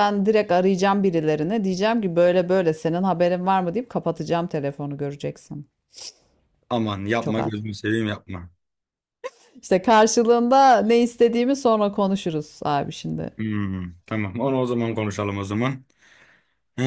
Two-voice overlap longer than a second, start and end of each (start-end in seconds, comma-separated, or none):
none